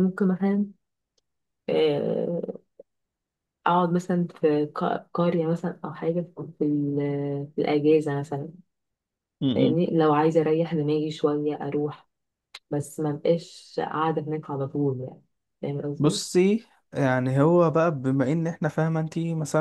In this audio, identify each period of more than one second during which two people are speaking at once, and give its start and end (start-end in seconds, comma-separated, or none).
none